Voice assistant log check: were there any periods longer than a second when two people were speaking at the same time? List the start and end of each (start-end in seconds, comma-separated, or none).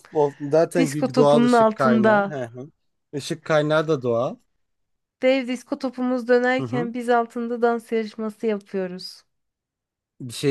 0.8-2.4